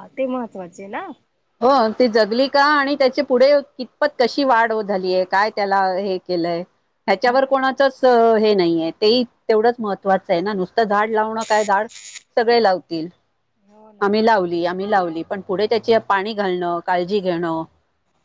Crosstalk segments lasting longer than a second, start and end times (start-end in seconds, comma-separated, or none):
none